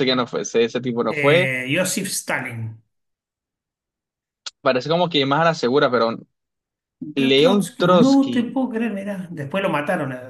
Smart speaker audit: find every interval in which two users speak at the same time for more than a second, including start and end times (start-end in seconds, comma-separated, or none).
7.2-8.6